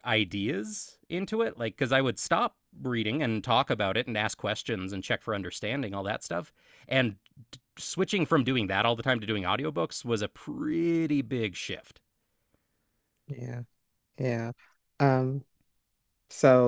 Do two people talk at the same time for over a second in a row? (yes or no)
no